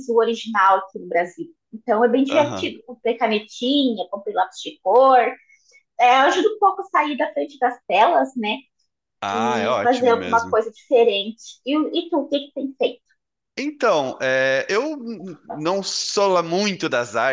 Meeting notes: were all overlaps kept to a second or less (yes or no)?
no